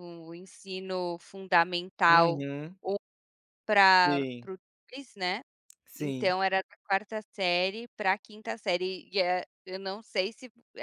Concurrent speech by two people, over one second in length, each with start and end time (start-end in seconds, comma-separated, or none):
none